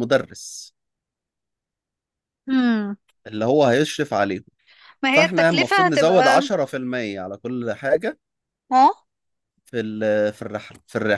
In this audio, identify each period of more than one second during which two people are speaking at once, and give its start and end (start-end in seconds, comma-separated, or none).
5.1-6.4